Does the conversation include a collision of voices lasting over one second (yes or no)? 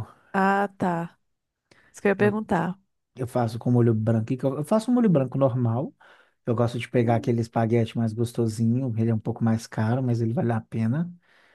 no